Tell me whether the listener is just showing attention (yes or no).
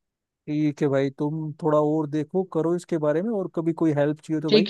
no